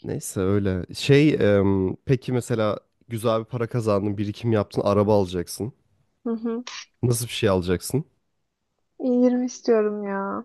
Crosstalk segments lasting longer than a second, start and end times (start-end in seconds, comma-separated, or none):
none